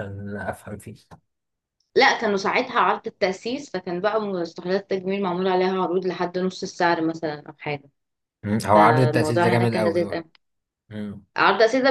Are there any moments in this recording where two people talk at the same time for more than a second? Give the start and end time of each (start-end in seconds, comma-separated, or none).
8.7-10.2